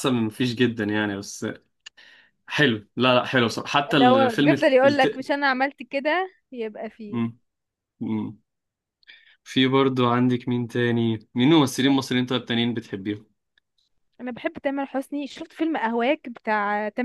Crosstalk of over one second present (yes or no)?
yes